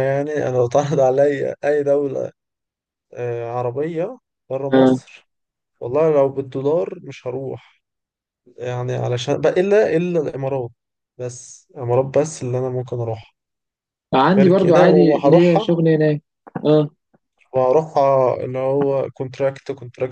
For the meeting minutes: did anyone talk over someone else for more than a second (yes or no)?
yes